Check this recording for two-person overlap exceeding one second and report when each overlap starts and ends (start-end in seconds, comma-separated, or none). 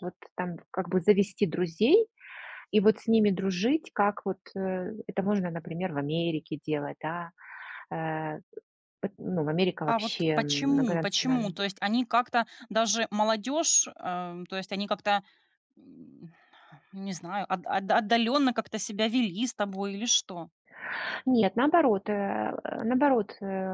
9.8-11.6